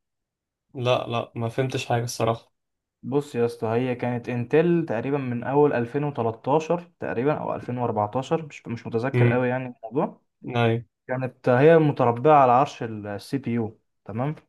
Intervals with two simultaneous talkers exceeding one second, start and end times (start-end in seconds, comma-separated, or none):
none